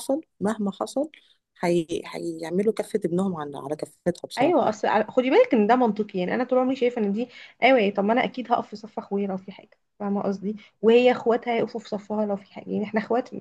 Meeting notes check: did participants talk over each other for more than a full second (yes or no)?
no